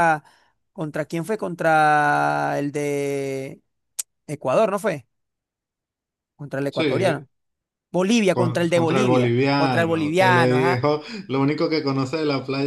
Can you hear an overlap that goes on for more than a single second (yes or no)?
yes